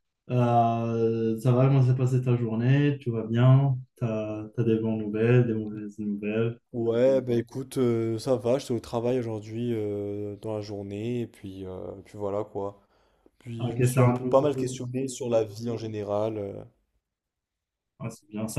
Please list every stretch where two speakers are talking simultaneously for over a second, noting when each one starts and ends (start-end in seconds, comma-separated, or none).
13.6-14.8